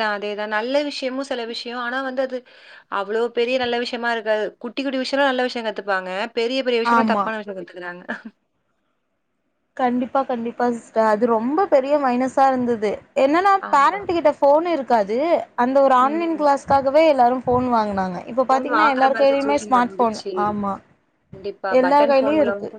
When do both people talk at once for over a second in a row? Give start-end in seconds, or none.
18.5-20.3